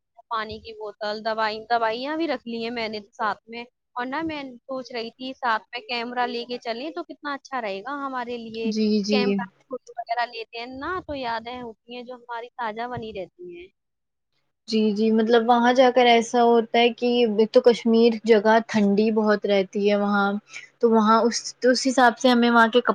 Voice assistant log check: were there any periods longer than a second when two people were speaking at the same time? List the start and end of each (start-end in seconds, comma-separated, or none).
none